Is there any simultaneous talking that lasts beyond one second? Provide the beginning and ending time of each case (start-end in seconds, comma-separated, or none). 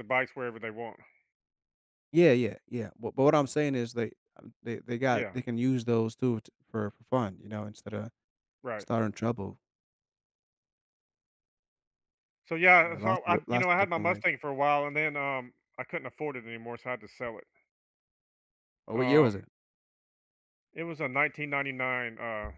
12.8-14.2